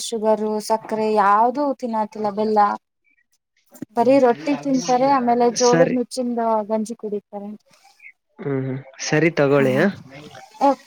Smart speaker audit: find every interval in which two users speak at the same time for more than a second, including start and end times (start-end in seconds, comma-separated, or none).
4.0-5.9